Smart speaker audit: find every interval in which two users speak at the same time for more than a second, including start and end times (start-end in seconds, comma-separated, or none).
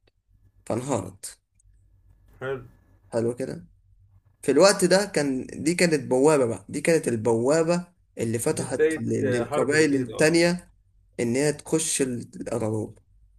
8.6-10.3